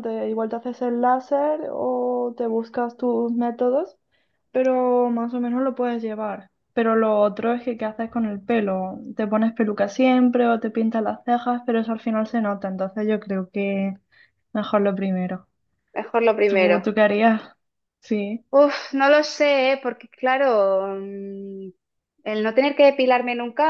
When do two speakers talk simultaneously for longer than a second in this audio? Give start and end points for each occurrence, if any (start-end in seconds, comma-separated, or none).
none